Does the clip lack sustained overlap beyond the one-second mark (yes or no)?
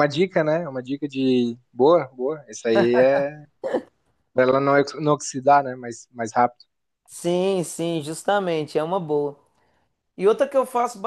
yes